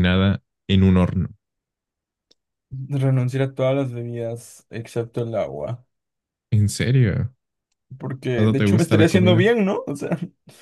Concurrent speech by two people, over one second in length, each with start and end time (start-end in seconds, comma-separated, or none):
8.3-9.6